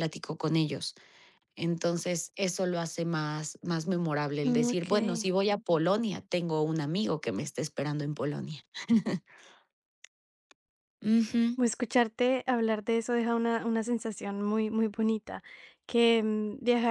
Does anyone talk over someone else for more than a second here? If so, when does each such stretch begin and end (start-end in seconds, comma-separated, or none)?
none